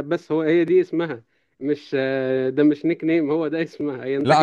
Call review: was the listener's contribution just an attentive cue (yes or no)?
no